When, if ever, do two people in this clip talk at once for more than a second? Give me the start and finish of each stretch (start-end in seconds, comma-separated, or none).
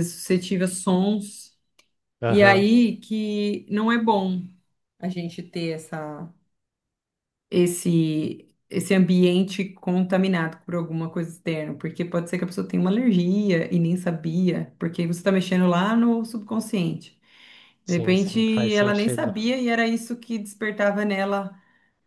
17.9-19.3